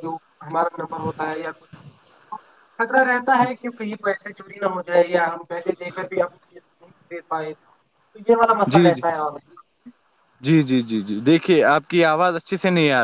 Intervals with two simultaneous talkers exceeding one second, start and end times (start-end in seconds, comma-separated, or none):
none